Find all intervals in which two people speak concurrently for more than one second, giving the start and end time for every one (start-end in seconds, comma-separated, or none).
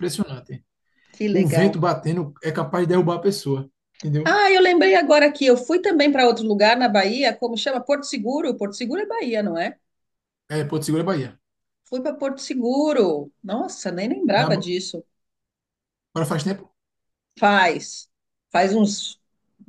none